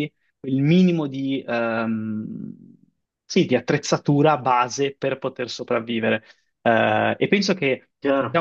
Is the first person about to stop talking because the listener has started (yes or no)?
no